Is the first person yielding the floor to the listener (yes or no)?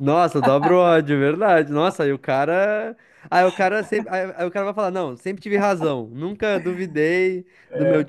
no